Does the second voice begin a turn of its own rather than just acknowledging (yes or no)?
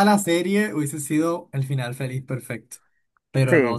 no